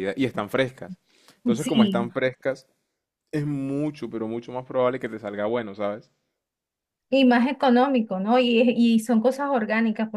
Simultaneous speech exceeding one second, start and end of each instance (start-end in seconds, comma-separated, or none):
none